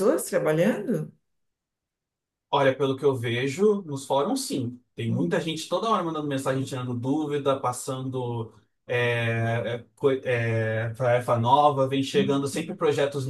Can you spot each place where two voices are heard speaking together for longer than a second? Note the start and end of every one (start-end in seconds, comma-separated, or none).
none